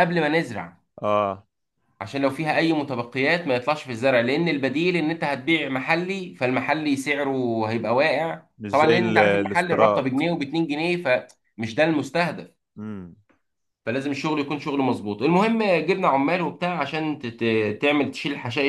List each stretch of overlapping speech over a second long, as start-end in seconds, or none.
8.6-10.0